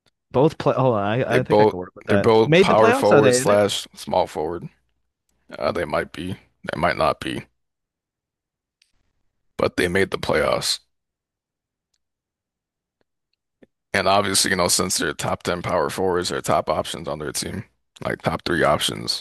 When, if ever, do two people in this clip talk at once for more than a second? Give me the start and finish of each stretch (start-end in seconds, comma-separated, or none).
1.2-3.6